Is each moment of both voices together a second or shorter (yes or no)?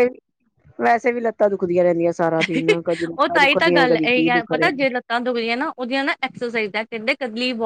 no